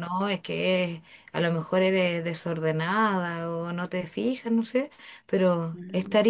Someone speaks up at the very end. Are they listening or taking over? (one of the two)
listening